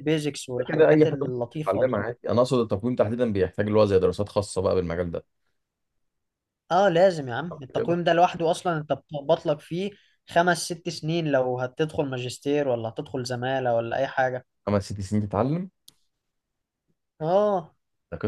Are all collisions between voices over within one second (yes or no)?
no